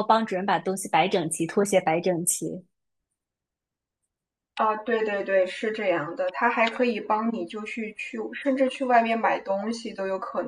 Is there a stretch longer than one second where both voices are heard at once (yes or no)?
no